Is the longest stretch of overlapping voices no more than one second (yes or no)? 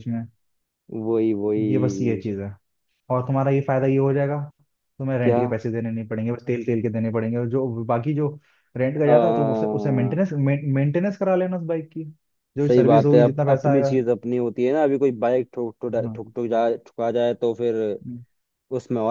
no